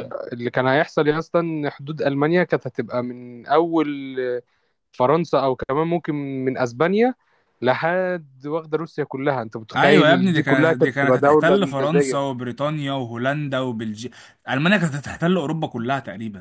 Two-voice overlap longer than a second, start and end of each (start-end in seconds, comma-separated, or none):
9.8-12.2